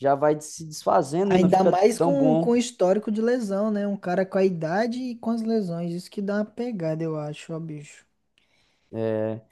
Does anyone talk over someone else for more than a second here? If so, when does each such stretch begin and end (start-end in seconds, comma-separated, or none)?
1.3-2.6